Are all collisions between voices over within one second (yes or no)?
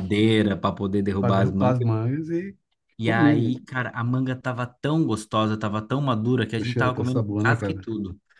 no